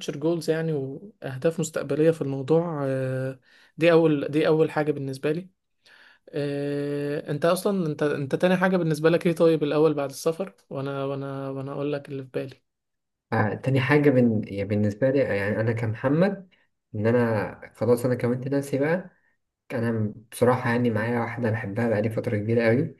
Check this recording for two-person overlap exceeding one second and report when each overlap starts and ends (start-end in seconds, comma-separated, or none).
none